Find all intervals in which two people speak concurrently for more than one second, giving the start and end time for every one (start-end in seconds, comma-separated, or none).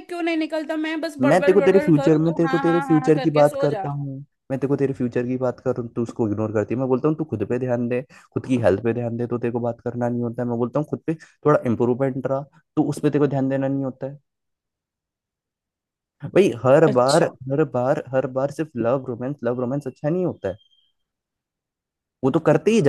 1.2-3.9